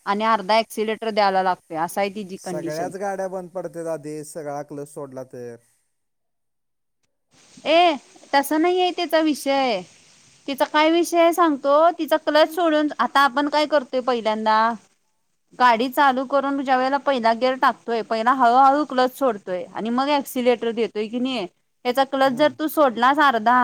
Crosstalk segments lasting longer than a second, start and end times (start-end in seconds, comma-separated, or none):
none